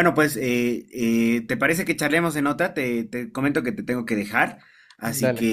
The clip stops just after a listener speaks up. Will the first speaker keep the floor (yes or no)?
yes